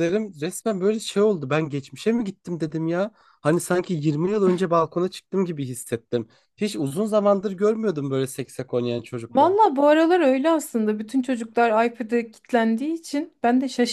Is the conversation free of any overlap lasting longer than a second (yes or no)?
yes